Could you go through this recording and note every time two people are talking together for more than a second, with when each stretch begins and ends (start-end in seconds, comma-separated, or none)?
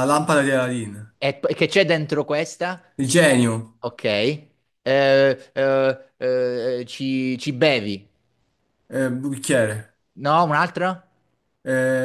none